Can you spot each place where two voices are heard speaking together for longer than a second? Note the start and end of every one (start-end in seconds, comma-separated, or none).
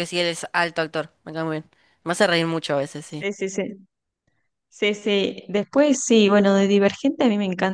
none